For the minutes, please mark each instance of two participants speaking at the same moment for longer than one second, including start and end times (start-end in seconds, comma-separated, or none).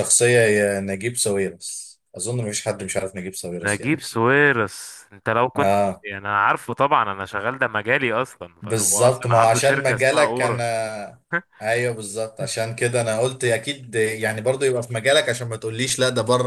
8.6-10.7